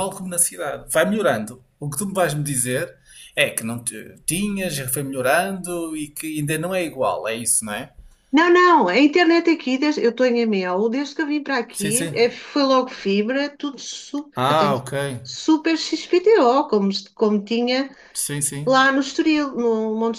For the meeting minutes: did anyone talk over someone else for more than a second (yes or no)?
no